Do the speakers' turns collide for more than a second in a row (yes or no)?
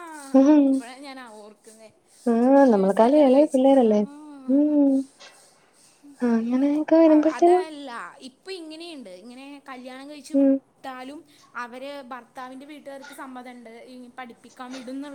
yes